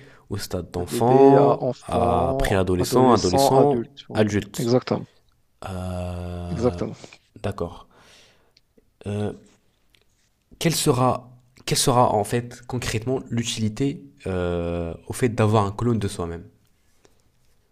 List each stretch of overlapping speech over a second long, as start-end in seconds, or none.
0.8-4.8